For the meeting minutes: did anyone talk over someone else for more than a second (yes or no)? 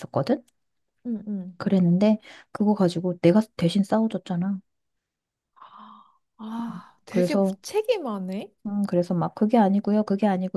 no